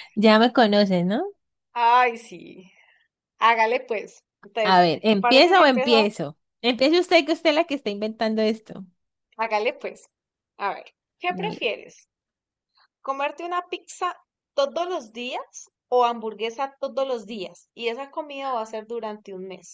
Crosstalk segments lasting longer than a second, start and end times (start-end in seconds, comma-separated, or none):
4.6-6.1